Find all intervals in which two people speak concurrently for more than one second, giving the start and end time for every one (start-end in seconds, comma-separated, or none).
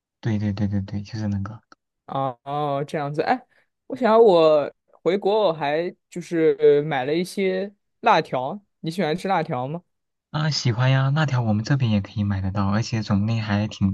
none